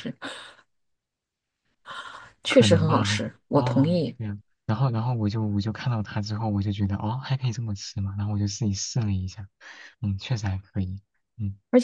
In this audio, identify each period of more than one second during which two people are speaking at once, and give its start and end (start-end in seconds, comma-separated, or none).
2.5-4.2